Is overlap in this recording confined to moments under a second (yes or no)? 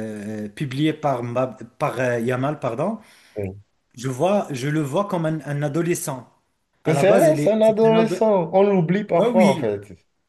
no